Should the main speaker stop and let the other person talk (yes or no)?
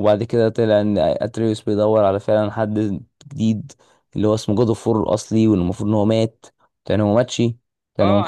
yes